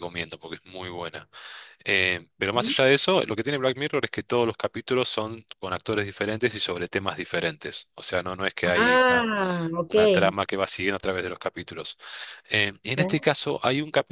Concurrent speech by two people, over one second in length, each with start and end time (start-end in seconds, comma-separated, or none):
none